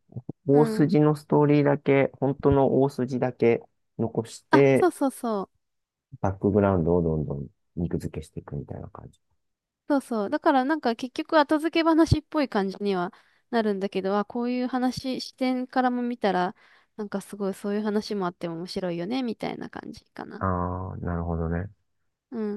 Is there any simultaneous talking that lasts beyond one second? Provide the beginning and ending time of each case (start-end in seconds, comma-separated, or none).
none